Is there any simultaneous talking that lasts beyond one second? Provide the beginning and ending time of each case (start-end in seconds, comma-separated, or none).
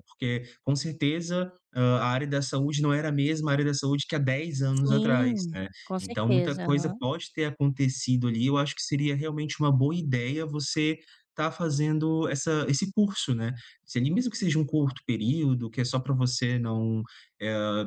4.8-7.0